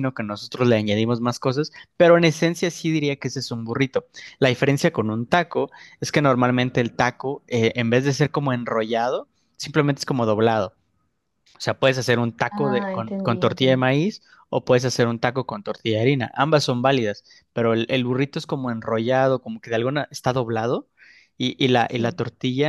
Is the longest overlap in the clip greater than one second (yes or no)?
yes